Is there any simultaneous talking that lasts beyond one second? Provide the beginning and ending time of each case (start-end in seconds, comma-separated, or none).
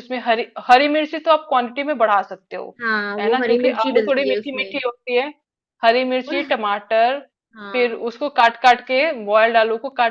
3.2-4.8